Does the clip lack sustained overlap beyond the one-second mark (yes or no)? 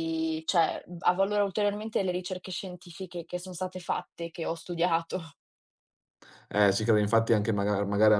yes